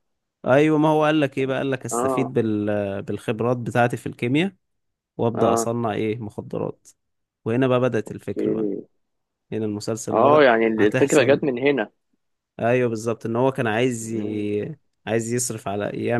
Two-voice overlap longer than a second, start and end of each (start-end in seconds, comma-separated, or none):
10.1-11.5